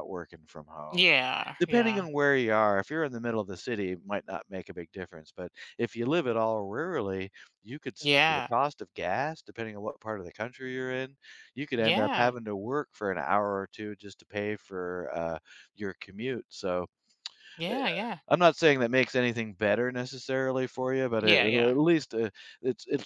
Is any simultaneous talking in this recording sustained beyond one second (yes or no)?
no